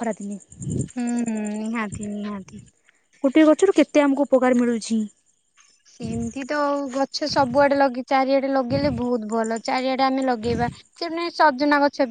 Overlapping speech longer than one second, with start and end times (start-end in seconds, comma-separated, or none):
none